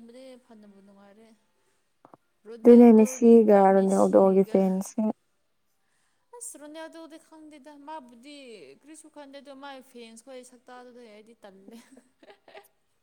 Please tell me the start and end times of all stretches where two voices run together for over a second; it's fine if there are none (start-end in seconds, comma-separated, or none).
2.6-4.5